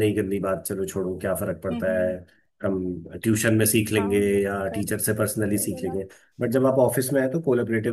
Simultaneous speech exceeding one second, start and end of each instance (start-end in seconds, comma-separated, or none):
4.0-6.0